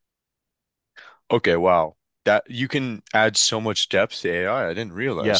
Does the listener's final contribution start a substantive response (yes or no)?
yes